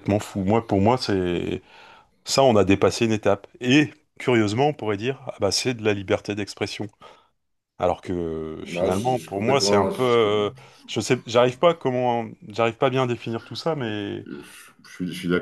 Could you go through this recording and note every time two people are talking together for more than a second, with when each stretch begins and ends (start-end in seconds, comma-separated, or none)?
8.6-10.5